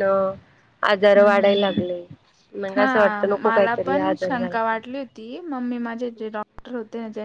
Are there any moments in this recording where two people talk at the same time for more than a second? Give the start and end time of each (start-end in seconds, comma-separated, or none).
2.7-4.6